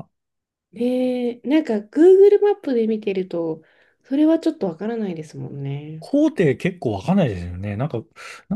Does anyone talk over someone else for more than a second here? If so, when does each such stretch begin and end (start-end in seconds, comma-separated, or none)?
none